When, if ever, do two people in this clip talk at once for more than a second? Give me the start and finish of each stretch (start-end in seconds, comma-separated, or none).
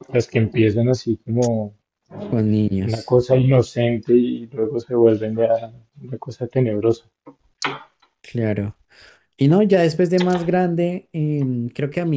none